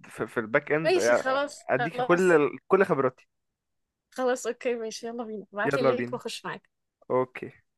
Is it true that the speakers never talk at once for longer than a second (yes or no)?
no